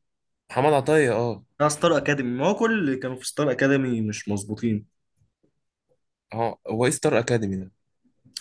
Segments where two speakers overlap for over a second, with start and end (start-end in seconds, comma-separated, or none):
none